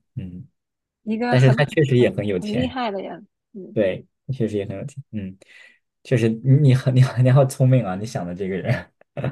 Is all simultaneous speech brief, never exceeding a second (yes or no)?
no